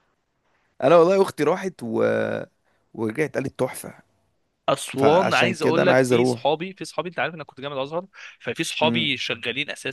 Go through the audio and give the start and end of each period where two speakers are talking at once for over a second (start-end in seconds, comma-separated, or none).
5.0-6.5